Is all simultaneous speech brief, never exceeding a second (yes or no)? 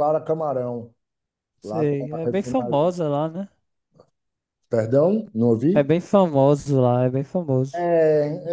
no